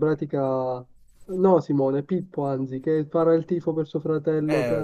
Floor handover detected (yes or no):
yes